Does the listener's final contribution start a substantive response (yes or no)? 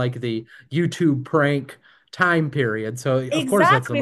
yes